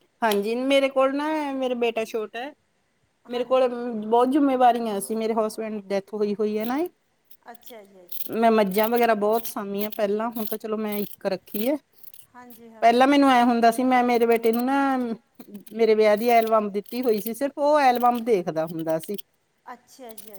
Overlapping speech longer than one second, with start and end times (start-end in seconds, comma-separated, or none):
none